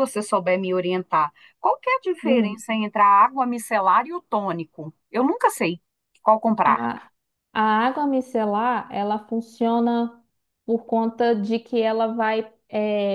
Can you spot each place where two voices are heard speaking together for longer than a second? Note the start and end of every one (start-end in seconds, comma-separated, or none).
none